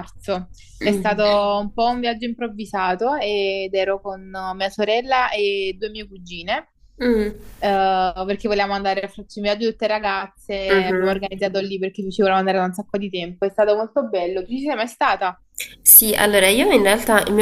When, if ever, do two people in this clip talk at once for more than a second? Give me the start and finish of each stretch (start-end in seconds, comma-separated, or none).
none